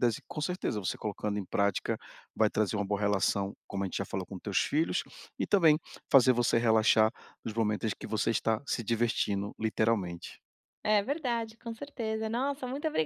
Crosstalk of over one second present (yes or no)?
no